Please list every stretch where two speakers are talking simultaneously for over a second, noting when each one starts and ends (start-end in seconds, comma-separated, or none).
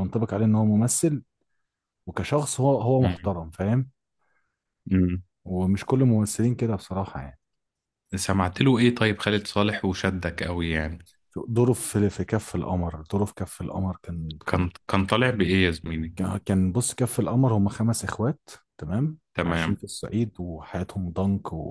none